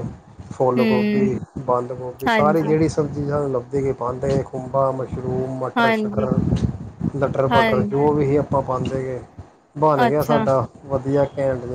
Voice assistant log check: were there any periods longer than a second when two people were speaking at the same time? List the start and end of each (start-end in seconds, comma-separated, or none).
none